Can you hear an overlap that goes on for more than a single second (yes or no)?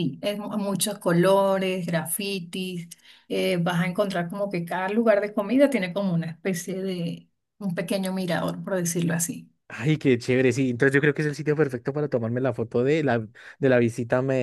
no